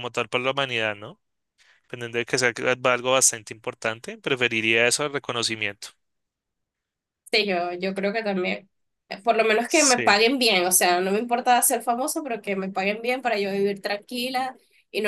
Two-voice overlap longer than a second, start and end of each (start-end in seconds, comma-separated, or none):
none